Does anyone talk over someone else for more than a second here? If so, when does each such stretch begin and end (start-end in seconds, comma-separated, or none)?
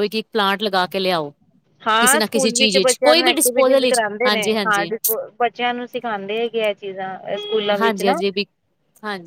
2.0-4.9